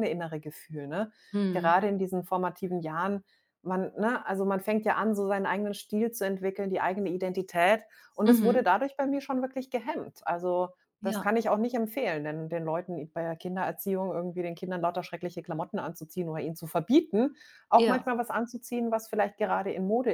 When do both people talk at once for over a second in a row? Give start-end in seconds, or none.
none